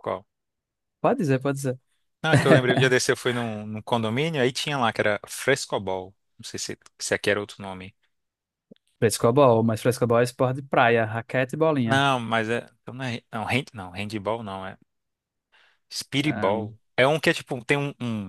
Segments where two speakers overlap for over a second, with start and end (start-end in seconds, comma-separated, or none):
none